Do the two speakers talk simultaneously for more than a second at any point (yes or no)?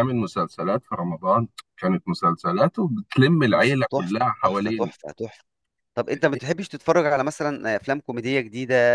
yes